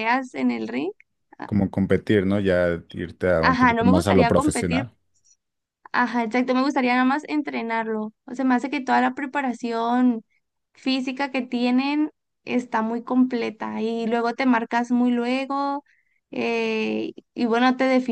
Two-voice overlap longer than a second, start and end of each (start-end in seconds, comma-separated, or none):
3.4-4.8